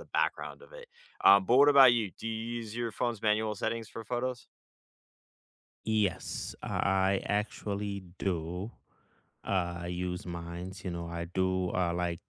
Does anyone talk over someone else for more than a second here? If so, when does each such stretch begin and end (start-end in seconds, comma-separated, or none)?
none